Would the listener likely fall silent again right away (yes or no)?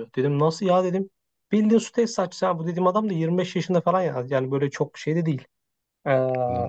yes